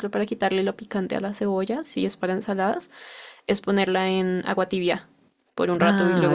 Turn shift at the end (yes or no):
yes